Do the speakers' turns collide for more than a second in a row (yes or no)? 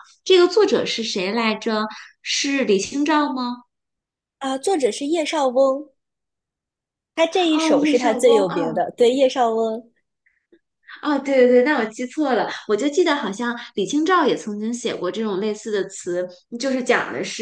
yes